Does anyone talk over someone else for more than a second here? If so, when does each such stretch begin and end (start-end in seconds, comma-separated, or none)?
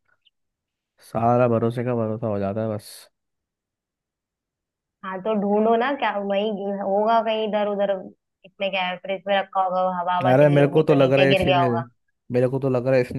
10.3-11.7